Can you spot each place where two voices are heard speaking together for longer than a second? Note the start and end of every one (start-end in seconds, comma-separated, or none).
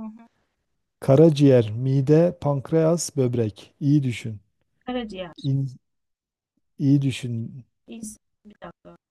none